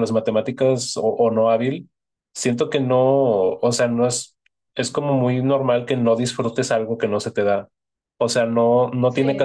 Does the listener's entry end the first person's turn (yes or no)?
no